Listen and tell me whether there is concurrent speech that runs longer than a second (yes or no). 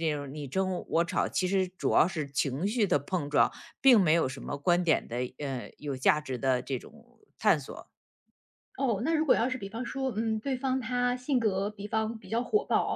no